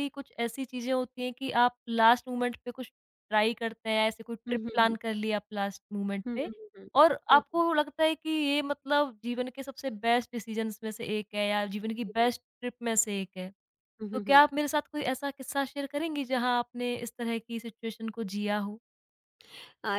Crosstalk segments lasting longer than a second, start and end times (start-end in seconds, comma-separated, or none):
none